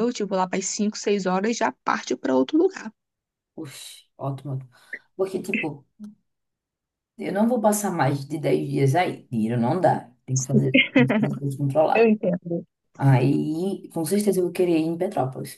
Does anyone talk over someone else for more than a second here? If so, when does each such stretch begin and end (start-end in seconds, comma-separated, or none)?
none